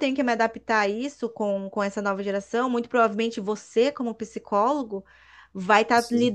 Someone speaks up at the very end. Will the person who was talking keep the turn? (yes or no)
yes